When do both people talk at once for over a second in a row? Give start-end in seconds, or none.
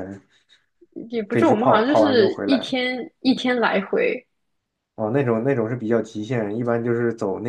1.3-2.7